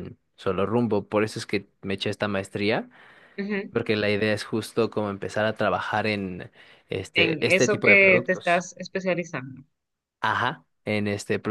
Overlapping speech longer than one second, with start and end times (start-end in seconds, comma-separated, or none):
7.2-8.7